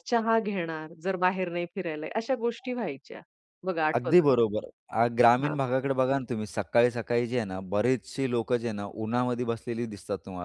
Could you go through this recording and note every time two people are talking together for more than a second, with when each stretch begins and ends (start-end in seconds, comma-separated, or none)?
none